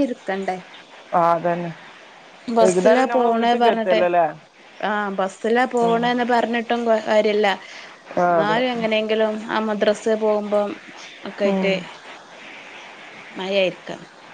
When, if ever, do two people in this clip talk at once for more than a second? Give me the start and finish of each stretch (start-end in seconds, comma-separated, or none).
2.6-4.0